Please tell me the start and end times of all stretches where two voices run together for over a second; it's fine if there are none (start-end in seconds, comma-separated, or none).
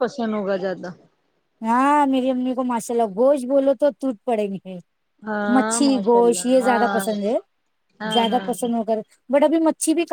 5.5-7.0